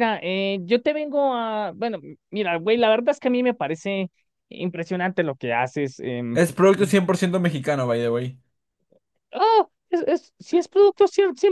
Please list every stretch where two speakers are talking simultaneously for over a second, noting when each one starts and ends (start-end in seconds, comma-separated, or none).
none